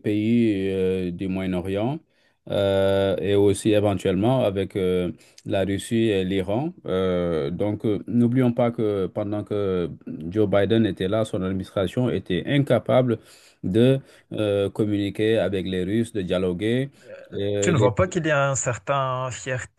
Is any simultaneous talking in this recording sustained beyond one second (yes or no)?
no